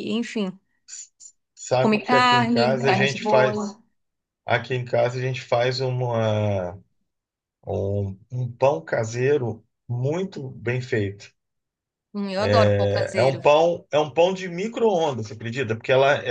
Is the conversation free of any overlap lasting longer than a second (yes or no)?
no